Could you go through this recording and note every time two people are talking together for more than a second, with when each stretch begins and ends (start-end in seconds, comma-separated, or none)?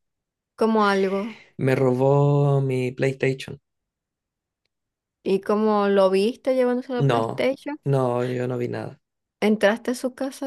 none